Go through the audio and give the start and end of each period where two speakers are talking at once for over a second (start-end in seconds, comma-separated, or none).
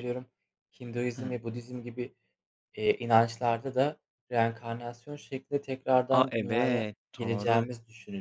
6.1-7.7